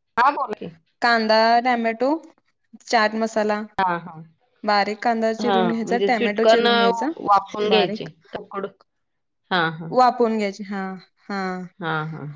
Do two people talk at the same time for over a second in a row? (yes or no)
yes